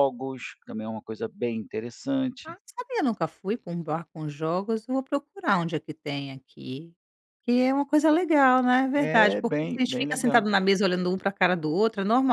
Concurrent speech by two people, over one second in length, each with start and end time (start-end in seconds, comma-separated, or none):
8.9-10.5